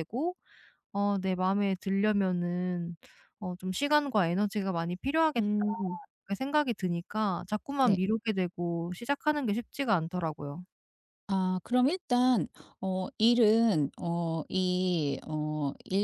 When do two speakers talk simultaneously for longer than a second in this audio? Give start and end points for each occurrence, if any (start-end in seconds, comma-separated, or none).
none